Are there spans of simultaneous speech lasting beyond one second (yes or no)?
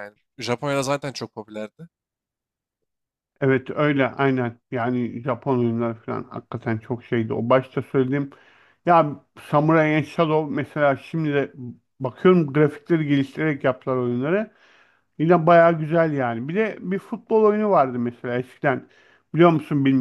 no